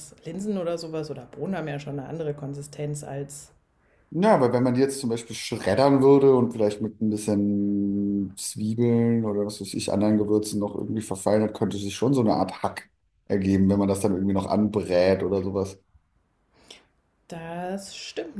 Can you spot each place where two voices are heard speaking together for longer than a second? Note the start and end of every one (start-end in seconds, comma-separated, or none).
none